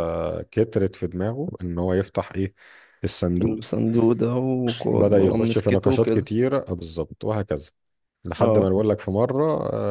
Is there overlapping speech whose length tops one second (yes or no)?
yes